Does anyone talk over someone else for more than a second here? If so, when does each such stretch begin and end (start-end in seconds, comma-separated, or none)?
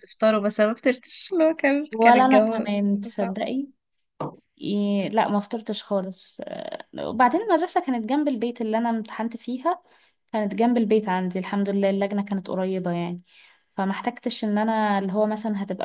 1.9-3.4